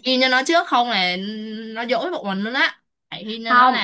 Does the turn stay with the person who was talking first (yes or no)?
yes